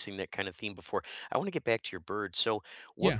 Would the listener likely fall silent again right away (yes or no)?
yes